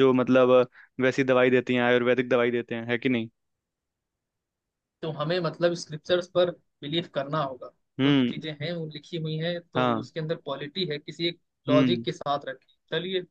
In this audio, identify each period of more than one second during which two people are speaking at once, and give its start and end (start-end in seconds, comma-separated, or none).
none